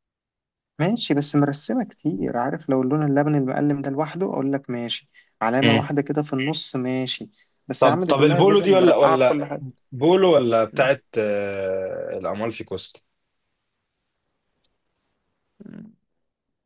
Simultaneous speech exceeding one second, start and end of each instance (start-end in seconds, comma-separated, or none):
7.8-9.6